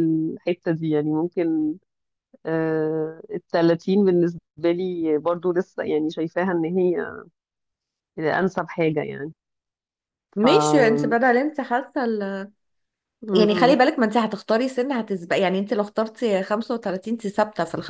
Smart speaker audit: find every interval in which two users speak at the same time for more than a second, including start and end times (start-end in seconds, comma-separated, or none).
none